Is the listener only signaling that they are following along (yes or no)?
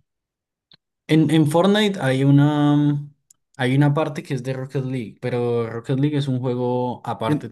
no